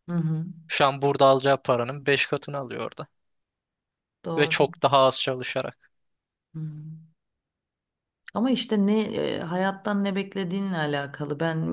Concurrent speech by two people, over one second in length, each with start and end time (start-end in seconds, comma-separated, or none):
none